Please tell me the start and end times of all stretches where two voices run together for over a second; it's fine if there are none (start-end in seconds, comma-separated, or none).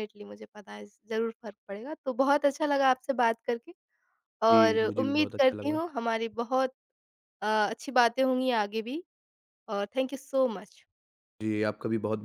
4.5-5.8